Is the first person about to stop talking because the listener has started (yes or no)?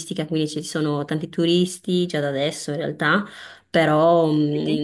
no